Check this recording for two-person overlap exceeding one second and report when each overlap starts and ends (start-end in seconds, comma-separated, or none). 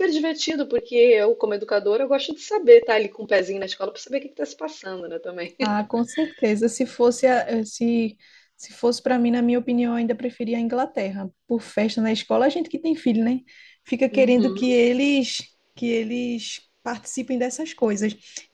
none